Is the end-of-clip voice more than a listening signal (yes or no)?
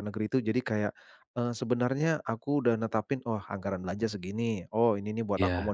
no